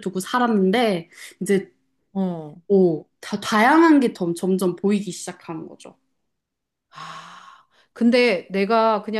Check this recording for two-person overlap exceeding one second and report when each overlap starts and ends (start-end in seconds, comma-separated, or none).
none